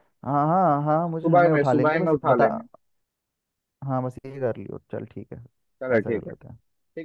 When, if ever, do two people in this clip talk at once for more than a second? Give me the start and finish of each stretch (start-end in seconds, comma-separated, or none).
1.1-2.5